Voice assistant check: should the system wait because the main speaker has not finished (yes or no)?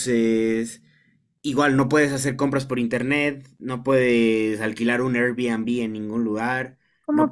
yes